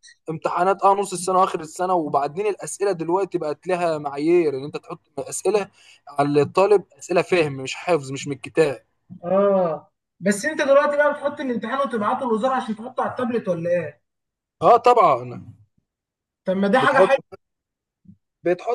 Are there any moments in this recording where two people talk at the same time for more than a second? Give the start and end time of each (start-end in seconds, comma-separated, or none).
none